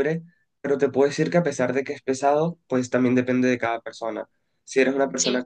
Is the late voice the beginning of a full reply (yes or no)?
no